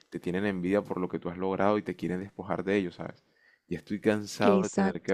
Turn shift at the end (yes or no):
no